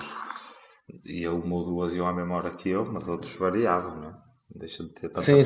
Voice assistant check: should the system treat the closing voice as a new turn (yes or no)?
yes